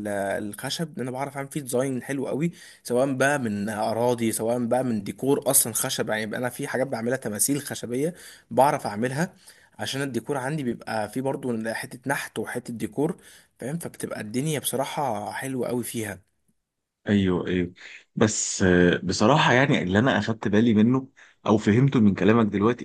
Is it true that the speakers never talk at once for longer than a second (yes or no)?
yes